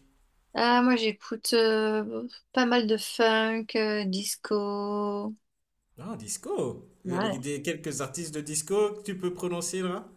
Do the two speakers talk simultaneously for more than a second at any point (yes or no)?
no